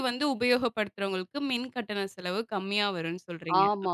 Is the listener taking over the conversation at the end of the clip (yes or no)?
yes